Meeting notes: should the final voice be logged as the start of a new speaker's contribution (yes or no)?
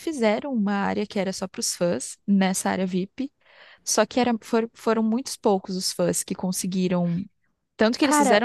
no